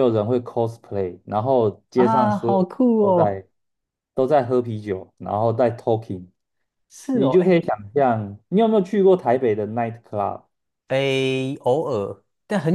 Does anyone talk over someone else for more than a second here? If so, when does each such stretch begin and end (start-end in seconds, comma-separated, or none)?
1.9-3.4